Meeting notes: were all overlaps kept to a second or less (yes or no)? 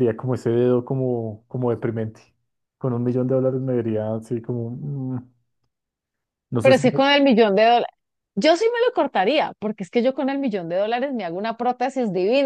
yes